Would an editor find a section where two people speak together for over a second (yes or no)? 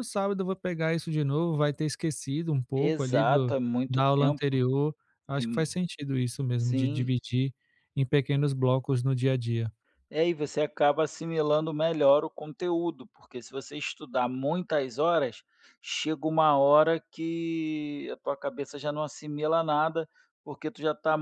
yes